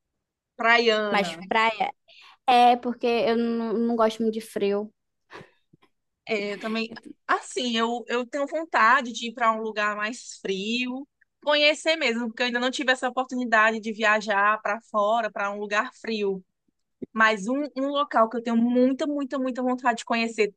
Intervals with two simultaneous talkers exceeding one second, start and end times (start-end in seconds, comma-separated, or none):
none